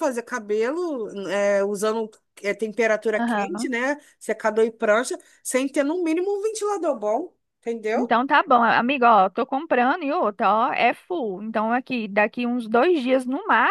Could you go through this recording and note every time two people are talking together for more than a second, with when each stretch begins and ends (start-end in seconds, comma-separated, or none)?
none